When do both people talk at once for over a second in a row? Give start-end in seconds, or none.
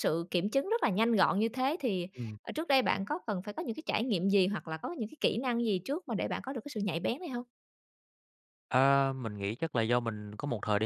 none